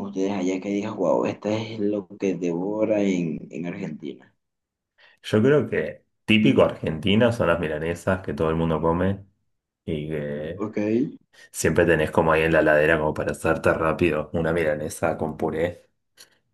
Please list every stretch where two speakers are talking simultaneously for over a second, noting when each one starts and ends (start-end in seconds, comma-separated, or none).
none